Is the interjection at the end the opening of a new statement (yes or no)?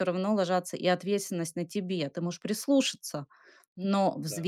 no